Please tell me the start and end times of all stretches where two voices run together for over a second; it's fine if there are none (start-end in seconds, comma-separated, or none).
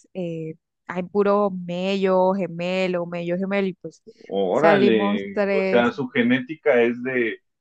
4.5-5.9